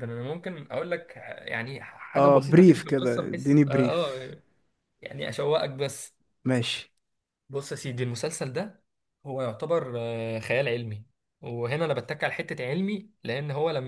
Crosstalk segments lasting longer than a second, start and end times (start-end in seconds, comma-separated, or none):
2.2-4.3